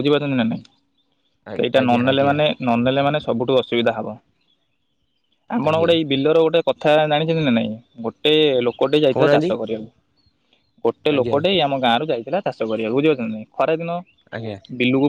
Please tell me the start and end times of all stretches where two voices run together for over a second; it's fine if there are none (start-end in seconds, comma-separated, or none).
none